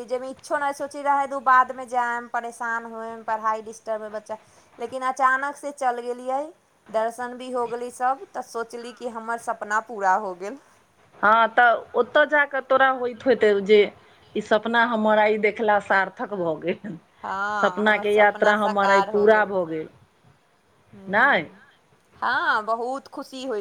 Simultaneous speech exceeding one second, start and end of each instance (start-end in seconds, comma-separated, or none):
17.6-19.3